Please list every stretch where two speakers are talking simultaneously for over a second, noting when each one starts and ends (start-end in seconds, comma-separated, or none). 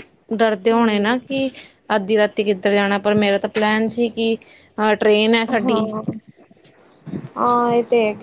none